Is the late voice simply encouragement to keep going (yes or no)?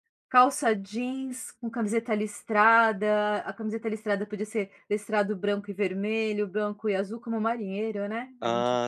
no